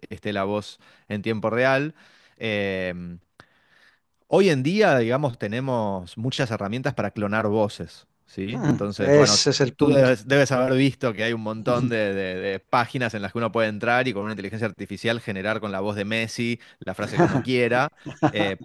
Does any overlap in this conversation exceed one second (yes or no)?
yes